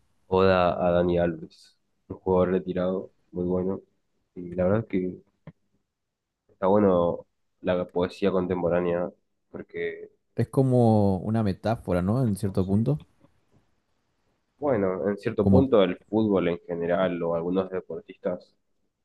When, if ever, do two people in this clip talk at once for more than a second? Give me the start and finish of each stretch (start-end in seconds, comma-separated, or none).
none